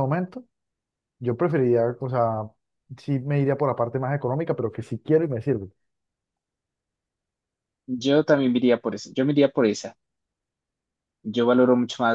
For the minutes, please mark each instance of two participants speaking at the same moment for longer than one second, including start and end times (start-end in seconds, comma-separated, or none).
none